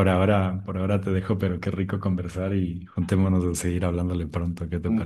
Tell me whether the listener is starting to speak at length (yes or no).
yes